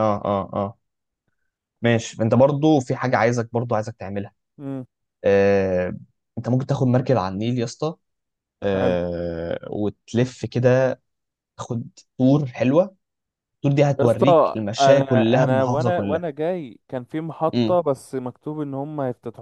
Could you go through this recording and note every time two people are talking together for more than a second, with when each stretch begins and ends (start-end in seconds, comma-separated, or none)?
14.0-16.2